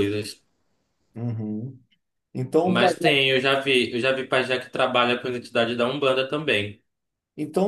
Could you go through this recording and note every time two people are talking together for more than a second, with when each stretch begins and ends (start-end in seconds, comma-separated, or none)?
none